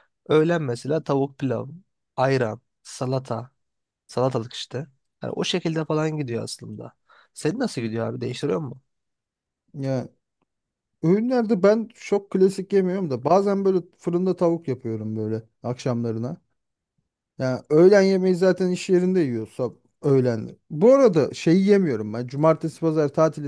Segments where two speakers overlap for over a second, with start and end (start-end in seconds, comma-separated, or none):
none